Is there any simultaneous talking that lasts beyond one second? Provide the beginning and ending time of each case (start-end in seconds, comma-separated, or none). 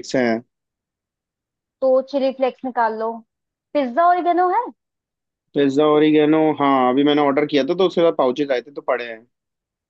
none